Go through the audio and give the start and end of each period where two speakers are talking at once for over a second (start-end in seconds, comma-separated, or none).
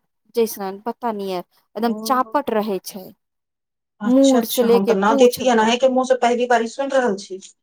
4.1-5.7